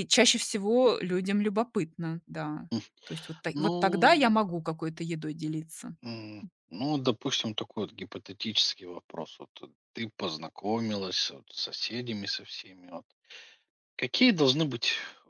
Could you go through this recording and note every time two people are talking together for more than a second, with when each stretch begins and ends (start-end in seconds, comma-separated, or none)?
none